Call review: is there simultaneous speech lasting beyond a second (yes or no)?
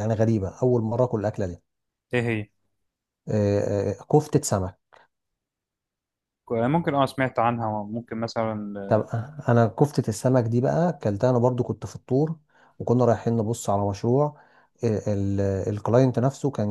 no